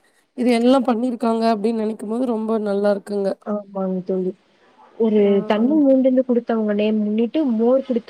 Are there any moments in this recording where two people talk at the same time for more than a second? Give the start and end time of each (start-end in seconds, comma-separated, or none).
none